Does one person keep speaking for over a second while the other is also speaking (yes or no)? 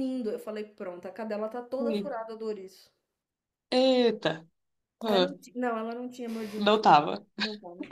no